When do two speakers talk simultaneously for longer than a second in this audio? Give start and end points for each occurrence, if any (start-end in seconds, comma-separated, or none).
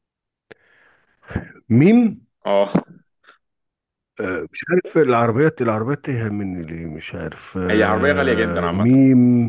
7.7-9.0